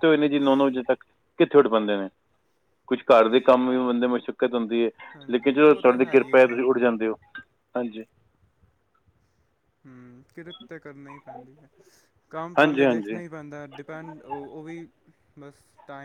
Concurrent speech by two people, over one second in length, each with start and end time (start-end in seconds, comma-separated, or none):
5.3-6.5